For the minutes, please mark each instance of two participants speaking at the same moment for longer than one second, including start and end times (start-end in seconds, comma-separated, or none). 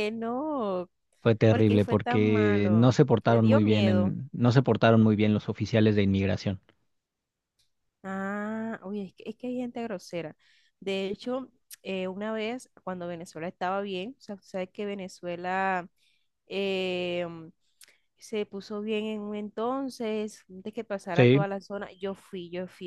1.5-4.1